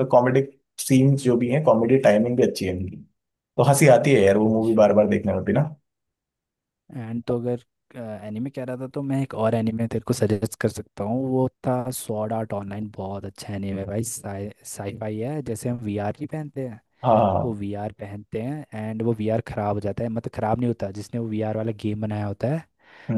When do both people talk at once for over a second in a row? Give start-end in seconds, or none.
none